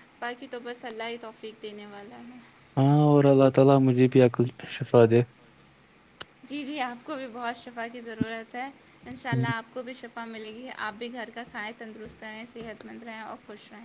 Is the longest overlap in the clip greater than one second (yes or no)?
no